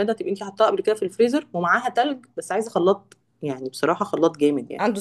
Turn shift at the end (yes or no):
no